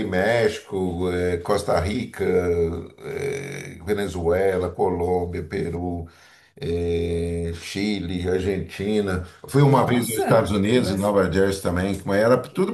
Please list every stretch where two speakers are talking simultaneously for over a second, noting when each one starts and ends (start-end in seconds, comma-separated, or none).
9.6-11.2